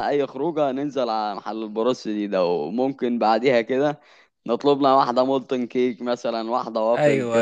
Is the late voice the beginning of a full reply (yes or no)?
no